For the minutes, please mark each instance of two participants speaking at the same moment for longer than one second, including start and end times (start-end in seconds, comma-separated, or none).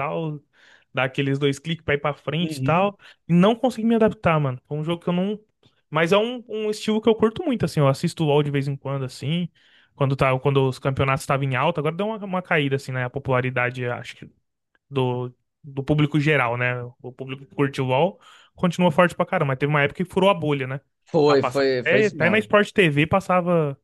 21.2-22.5